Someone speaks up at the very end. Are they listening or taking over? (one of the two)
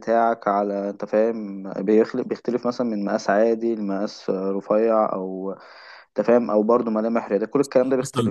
taking over